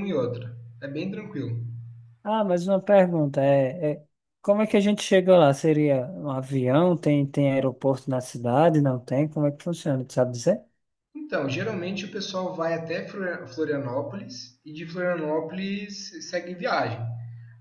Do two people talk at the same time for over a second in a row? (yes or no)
no